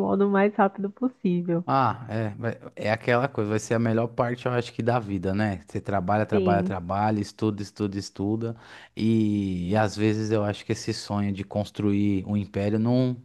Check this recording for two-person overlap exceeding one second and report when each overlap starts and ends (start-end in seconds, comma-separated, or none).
none